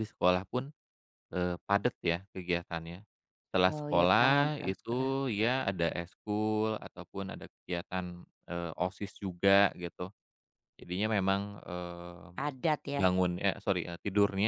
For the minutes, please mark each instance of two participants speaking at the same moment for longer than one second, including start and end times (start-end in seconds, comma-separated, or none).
3.7-5.1